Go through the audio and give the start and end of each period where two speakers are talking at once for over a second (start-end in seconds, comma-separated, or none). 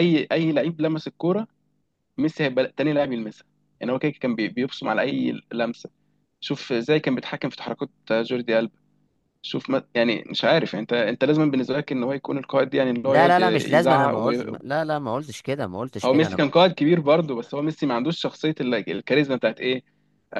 13.1-14.3